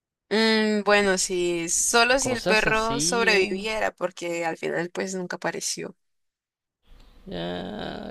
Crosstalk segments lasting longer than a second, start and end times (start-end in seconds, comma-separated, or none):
2.2-3.5